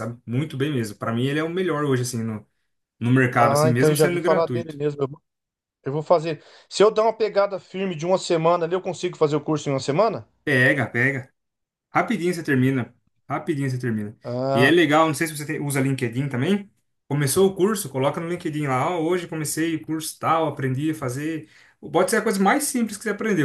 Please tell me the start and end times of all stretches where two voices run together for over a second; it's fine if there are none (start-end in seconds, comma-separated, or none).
3.4-4.8